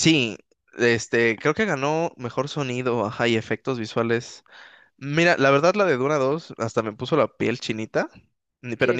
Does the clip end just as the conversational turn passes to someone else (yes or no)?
no